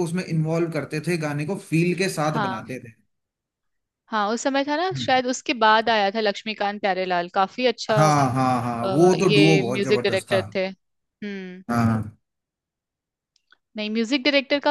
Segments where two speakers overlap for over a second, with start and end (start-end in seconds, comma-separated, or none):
8.8-10.4